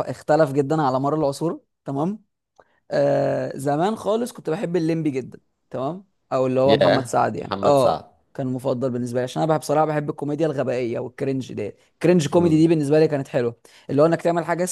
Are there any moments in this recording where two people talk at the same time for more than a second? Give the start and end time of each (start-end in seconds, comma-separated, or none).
6.7-8.1